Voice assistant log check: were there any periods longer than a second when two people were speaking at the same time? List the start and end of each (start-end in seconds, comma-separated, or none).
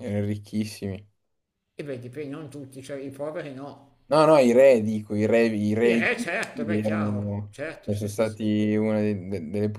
5.8-8.4